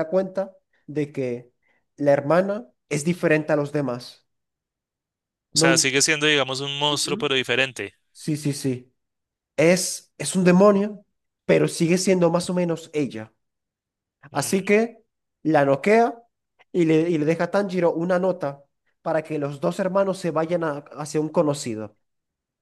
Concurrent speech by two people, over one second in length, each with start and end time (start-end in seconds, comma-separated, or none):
none